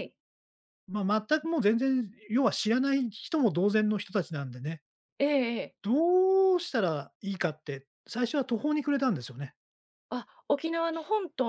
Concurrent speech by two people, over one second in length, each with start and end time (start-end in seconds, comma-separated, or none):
none